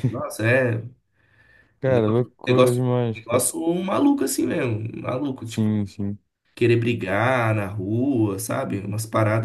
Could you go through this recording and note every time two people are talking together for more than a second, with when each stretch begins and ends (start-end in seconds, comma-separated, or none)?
1.8-3.5